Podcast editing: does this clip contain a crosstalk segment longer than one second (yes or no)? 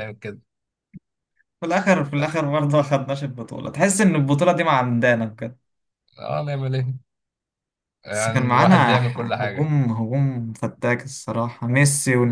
yes